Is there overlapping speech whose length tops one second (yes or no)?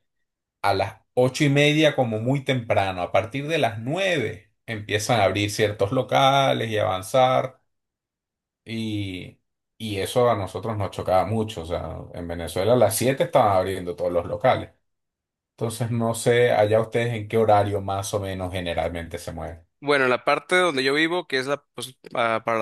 no